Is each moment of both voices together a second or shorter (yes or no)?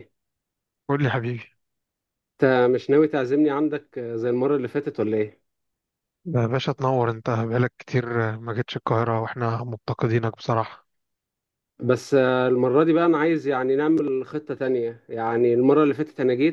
yes